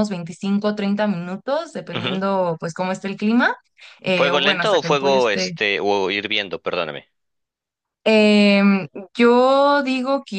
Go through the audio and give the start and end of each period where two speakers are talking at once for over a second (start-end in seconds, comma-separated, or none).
4.2-5.6